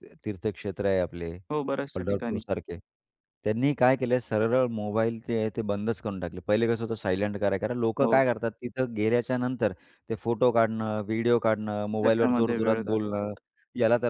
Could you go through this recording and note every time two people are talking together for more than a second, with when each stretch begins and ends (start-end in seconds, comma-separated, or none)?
12.0-13.2